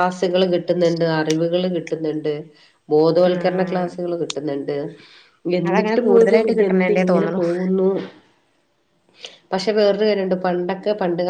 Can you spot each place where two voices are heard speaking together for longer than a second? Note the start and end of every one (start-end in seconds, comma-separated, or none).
5.7-7.4